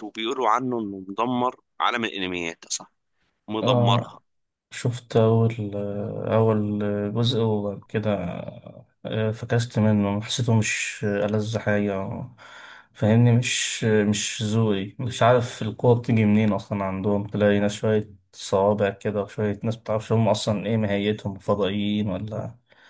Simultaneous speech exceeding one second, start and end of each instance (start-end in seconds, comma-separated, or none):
none